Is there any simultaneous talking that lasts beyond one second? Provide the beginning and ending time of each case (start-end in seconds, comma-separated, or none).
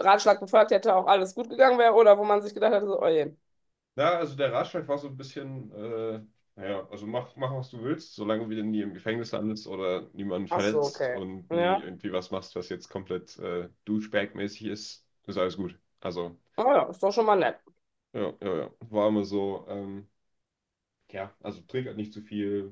10.5-11.9